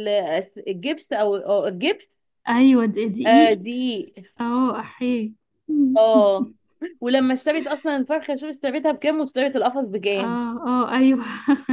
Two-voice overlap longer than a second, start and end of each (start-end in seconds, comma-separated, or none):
none